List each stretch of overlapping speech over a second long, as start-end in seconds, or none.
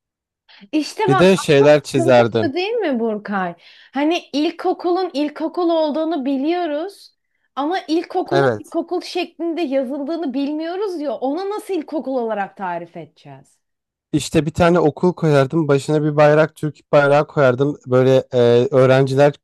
1.1-2.5